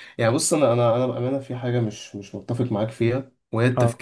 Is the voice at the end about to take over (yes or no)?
no